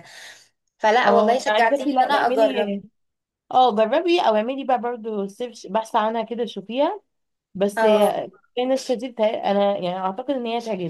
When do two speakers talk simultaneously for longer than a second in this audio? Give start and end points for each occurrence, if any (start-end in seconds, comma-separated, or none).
1.1-2.7